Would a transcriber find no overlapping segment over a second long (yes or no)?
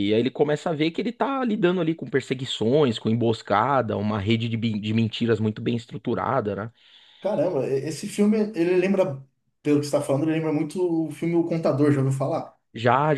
yes